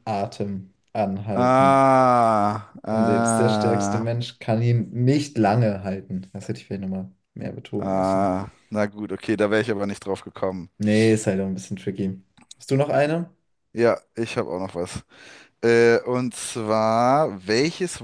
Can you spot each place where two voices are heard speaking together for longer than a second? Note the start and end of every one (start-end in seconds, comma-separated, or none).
2.9-4.1